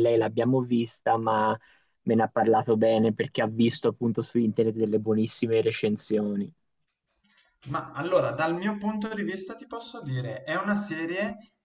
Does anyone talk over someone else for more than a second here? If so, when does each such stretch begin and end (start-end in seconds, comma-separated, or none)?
none